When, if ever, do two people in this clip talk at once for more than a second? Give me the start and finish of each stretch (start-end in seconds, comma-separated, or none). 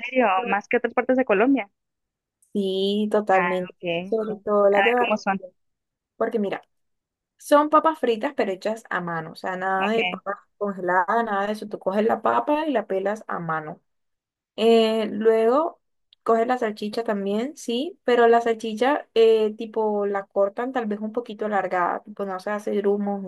3.3-5.4